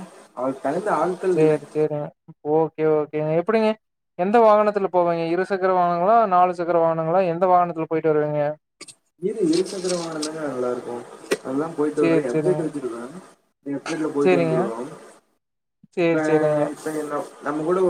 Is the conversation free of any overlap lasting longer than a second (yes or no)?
yes